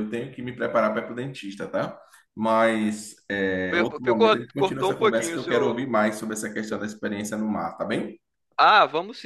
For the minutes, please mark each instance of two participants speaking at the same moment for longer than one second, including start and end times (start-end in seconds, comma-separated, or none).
3.7-5.8